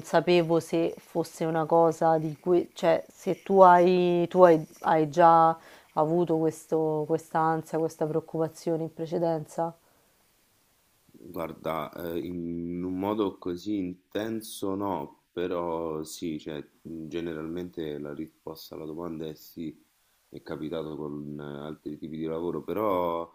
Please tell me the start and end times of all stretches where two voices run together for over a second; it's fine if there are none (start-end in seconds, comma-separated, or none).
none